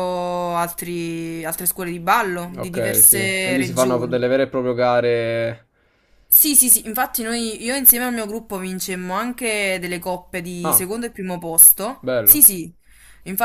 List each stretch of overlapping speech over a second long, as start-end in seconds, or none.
2.6-4.2